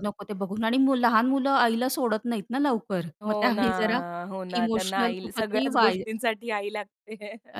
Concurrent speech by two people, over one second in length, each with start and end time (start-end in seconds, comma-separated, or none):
4.6-6.0